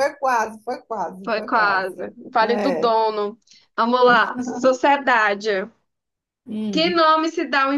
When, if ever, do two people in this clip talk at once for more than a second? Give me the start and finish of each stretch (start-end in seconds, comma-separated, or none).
1.2-2.9